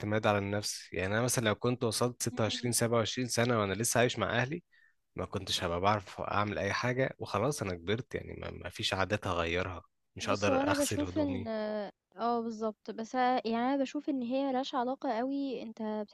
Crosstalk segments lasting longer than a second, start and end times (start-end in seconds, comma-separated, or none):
10.2-11.5